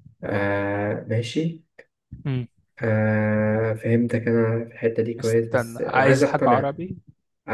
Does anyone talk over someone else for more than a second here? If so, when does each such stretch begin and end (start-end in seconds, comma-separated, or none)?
5.2-6.8